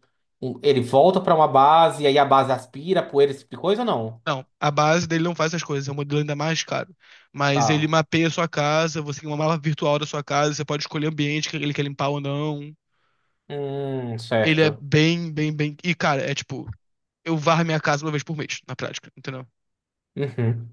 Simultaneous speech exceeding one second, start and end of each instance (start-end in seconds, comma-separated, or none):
none